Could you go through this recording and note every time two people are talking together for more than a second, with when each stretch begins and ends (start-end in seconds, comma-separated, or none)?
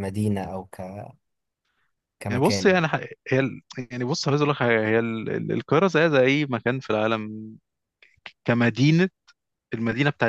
none